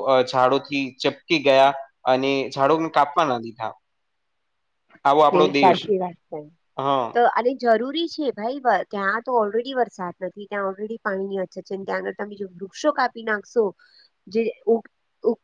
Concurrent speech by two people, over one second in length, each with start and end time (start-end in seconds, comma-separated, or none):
none